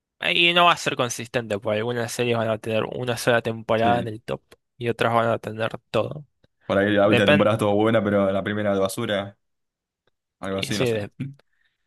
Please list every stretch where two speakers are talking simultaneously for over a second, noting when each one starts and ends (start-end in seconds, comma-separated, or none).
none